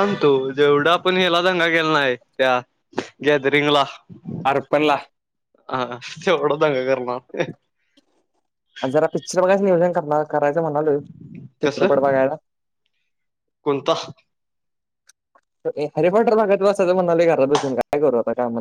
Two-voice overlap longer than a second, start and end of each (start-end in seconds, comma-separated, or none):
none